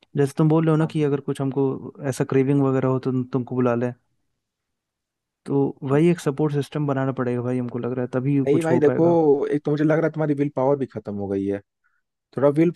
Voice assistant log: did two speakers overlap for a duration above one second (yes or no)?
no